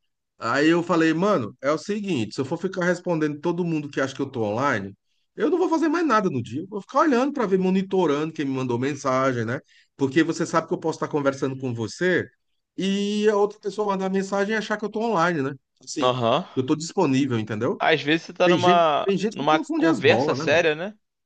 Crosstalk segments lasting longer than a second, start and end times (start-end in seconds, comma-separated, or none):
18.4-20.7